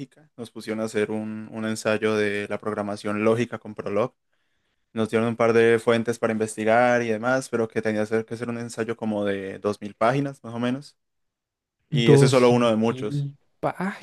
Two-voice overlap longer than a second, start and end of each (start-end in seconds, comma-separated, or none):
11.9-13.3